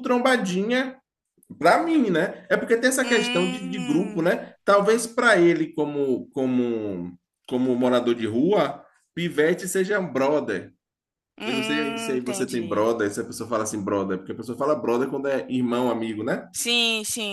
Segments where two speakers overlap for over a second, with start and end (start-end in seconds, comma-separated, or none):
3.0-4.3, 11.4-12.9